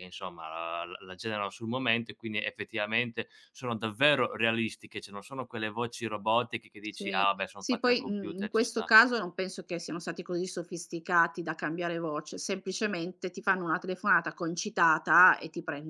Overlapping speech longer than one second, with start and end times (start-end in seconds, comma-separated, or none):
6.9-8.9